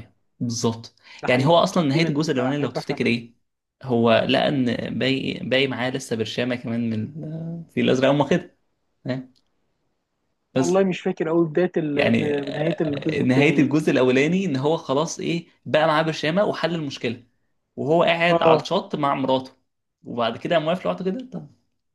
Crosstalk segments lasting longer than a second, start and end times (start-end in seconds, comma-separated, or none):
1.2-3.1, 11.9-13.7